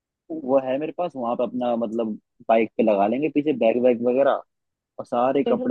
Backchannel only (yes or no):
yes